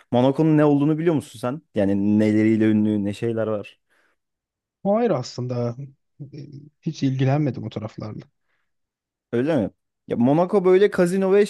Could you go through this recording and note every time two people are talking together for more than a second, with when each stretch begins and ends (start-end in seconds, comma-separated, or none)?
none